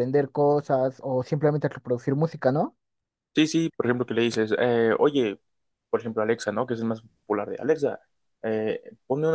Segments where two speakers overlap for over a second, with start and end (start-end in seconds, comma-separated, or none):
none